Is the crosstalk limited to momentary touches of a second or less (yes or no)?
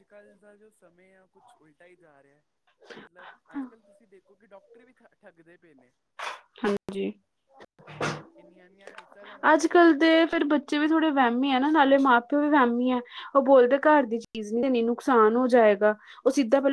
yes